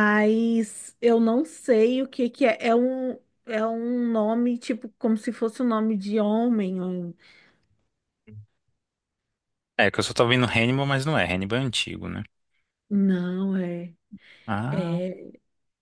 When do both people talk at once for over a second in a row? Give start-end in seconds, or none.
none